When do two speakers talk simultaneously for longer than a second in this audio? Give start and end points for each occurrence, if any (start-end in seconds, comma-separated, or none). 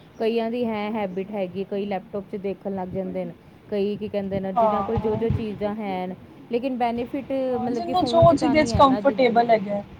7.5-9.1